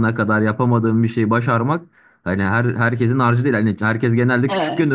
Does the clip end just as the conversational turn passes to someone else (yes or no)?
no